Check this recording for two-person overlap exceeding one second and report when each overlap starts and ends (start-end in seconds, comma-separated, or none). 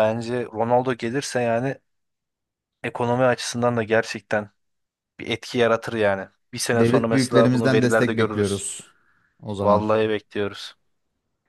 6.7-8.6